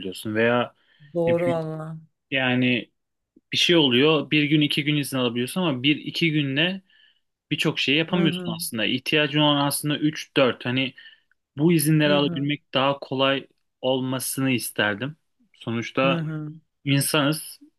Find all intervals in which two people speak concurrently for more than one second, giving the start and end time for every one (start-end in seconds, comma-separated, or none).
none